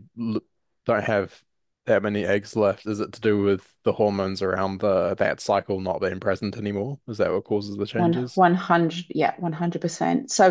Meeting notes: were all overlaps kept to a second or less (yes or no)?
yes